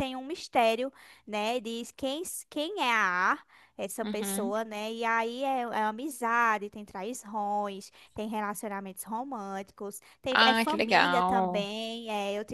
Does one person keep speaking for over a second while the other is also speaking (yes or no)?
yes